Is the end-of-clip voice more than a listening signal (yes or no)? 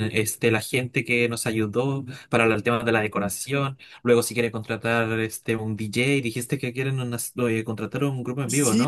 yes